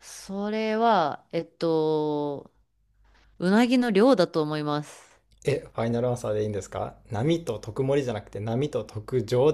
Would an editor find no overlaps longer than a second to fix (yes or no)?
yes